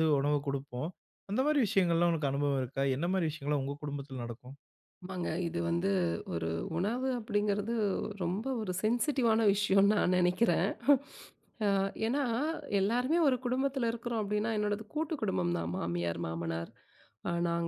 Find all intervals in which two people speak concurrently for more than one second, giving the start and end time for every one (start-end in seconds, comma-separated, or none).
none